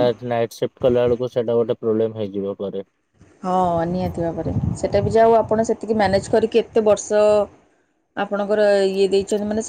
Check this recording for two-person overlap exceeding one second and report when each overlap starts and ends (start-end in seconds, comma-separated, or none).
none